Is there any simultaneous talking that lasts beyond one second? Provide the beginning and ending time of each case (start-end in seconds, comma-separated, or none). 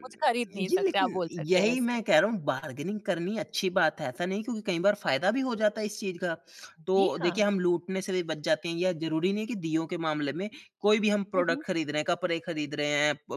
0.5-2.0